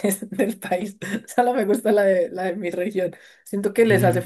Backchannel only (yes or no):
yes